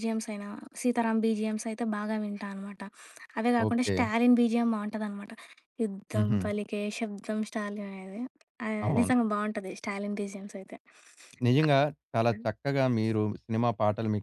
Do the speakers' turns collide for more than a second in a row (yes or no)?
no